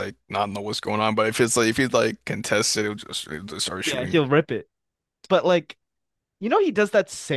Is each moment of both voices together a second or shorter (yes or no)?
yes